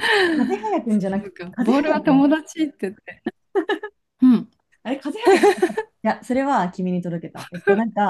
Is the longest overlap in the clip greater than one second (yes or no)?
yes